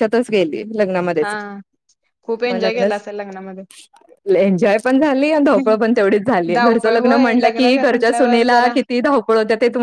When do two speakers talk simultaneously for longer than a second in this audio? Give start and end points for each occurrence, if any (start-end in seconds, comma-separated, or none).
6.5-8.7